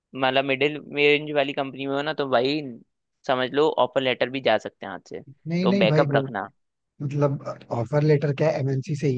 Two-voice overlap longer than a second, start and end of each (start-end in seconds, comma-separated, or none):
none